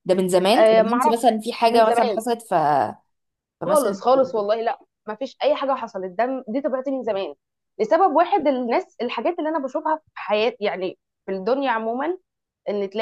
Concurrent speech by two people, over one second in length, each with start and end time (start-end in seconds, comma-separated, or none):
0.6-2.2